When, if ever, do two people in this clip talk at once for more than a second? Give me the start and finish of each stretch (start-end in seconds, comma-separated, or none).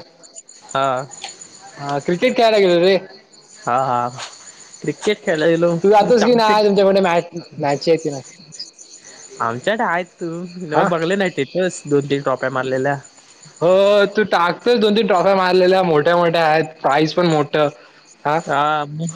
none